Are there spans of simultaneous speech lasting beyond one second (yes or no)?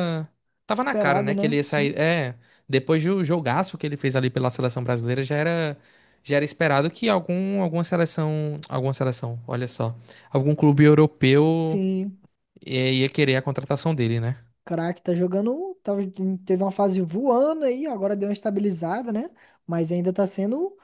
yes